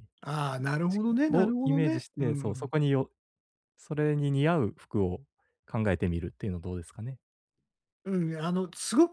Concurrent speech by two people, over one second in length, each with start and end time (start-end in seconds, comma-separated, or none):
0.9-2.7